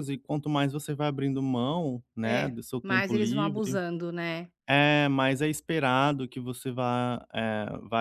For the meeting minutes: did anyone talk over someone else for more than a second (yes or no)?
yes